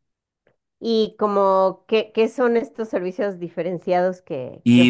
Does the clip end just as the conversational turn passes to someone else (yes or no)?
yes